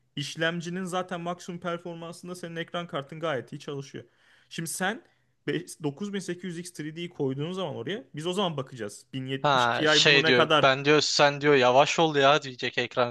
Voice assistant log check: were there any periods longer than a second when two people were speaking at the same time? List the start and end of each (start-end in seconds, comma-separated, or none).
9.4-10.8